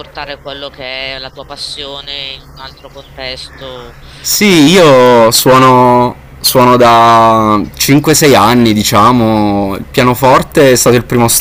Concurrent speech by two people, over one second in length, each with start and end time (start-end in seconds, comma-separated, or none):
4.5-5.8